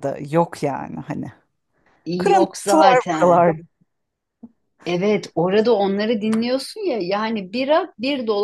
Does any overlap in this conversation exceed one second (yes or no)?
yes